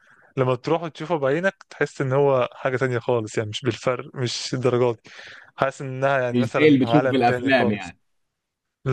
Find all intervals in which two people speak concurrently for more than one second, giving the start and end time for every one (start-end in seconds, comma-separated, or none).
6.3-7.9